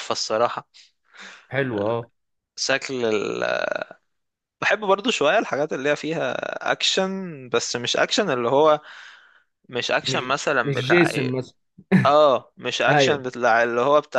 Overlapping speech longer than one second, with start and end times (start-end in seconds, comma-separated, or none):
10.1-11.4